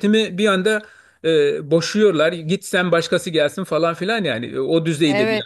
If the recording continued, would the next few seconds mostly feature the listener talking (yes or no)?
yes